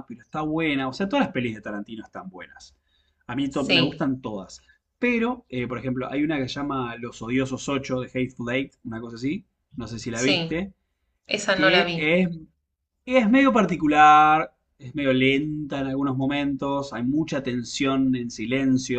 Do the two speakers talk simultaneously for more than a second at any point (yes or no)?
no